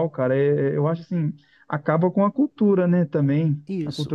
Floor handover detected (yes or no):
no